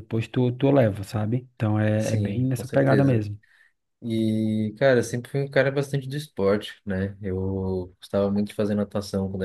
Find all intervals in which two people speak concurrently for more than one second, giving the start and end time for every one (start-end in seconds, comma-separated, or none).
2.0-3.2